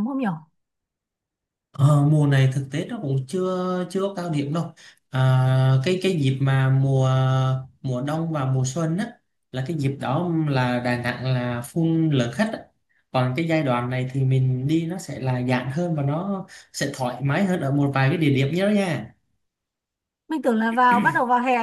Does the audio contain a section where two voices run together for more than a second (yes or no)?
no